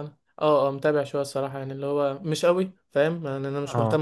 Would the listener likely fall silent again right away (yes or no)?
yes